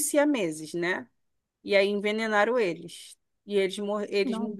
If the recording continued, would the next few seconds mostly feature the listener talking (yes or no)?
no